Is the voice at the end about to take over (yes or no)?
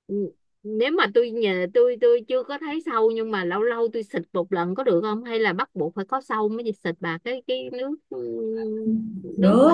yes